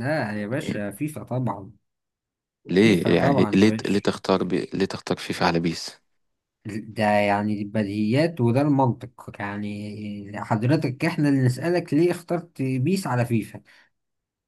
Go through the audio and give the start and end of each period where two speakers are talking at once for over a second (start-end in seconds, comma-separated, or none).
2.8-4.0